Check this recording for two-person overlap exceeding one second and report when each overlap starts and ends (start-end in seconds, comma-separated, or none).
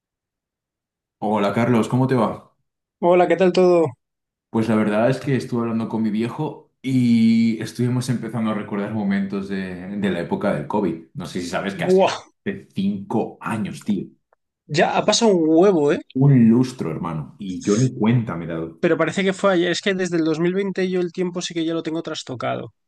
none